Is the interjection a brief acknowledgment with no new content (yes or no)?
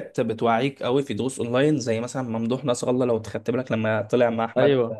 yes